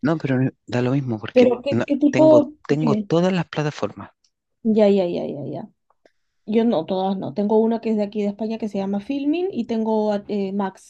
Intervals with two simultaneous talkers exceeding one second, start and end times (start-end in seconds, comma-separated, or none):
1.3-3.1